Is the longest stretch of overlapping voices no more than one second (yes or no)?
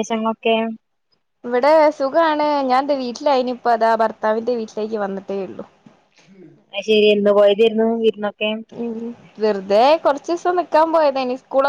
yes